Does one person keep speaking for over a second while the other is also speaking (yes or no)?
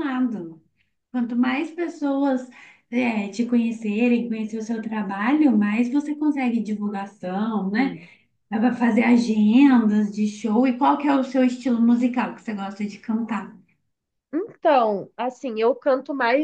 no